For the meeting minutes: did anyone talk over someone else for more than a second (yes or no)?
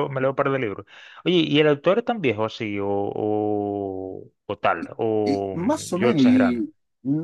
yes